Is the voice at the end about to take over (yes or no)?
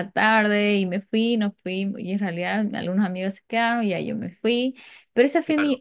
no